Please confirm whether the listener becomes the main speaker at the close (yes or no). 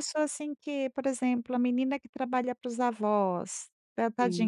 no